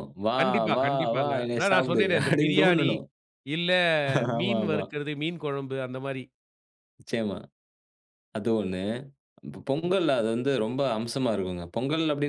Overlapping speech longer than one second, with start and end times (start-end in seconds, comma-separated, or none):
0.8-2.9